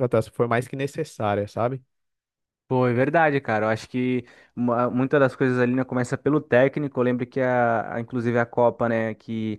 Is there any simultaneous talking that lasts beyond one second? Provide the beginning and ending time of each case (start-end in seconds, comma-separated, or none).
none